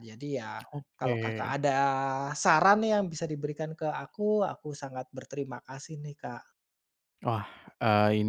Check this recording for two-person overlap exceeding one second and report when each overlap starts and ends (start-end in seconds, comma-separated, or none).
none